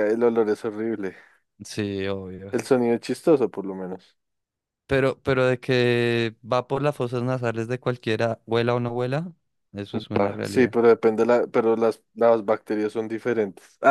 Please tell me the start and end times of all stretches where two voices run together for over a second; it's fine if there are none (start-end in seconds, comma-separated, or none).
none